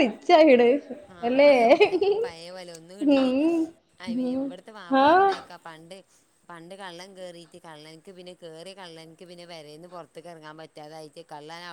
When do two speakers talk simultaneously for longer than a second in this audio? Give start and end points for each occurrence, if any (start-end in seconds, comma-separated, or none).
none